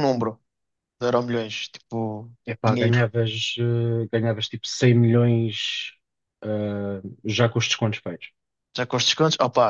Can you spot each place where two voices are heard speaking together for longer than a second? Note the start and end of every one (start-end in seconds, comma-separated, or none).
none